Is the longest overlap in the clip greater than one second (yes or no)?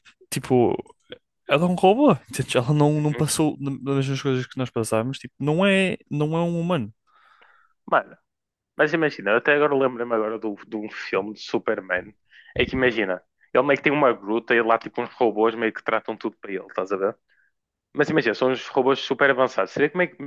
no